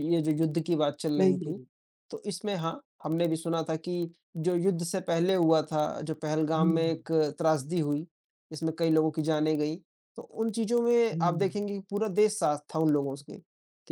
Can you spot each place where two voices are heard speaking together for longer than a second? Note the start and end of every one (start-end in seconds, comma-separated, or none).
none